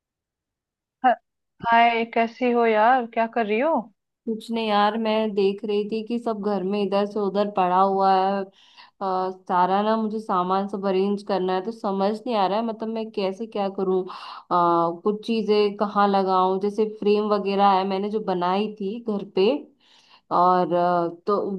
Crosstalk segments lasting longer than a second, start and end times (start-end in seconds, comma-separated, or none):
none